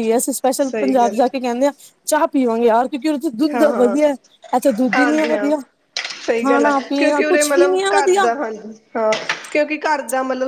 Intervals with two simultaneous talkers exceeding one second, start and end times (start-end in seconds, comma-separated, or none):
6.4-8.3